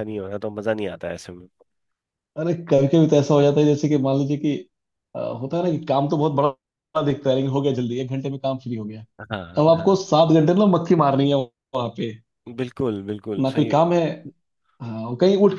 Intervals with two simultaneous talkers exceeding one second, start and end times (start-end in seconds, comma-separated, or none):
none